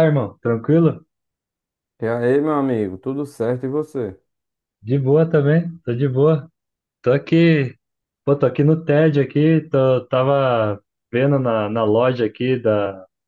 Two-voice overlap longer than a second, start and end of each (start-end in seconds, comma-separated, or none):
none